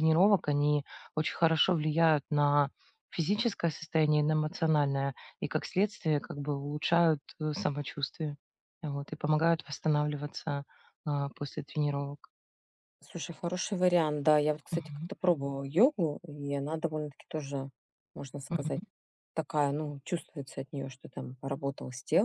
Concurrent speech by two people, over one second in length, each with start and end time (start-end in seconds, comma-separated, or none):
none